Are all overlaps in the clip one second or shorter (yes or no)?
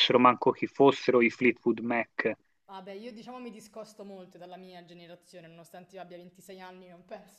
yes